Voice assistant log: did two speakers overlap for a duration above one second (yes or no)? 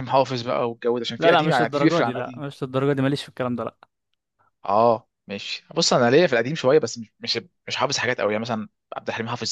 yes